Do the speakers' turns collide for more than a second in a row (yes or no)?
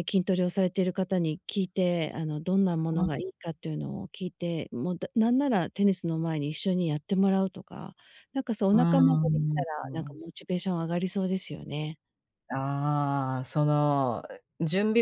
yes